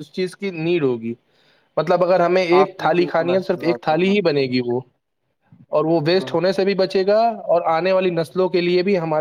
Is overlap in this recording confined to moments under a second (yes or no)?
no